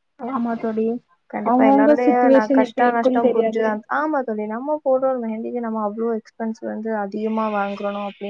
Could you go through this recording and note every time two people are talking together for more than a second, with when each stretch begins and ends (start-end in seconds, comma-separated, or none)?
1.5-3.7